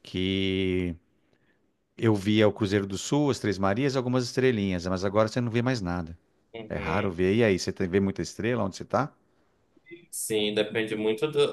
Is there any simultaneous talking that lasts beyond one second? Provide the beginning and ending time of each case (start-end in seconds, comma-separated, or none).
none